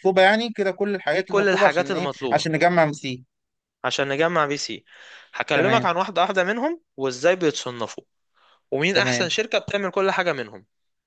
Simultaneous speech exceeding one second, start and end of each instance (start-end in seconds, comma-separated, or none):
1.1-2.5